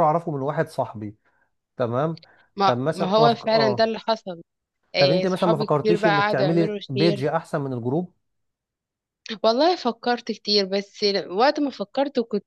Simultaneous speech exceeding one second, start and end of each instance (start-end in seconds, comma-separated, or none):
2.6-3.9, 5.0-7.3